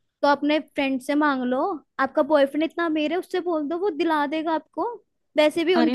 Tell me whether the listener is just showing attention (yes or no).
no